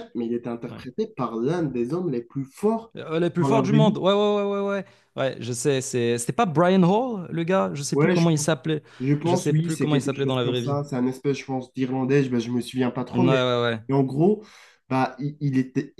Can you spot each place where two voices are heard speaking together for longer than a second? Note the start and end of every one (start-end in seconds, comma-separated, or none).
9.2-10.8